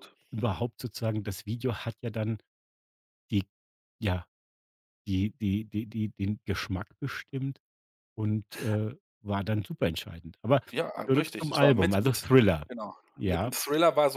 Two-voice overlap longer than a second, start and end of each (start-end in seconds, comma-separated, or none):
11.1-12.3